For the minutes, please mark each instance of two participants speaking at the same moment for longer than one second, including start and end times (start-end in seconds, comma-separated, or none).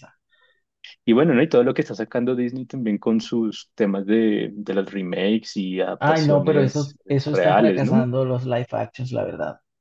6.0-8.1